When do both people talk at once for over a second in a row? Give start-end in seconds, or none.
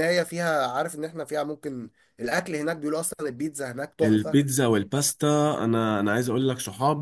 none